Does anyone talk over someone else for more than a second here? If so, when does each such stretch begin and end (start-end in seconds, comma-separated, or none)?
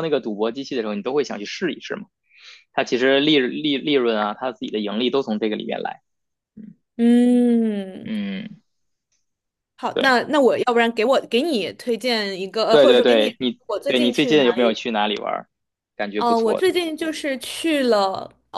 12.7-14.8